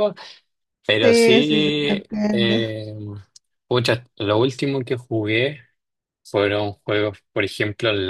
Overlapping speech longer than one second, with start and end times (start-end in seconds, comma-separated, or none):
1.0-2.5